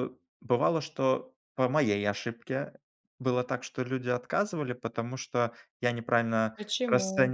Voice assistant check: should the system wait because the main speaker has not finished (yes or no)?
yes